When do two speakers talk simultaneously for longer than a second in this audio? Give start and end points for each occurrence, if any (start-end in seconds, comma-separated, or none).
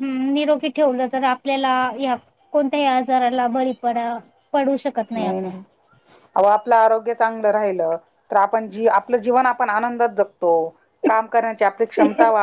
none